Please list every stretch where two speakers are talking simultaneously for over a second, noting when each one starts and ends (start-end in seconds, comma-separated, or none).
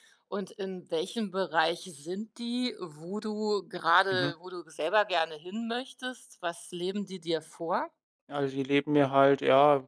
none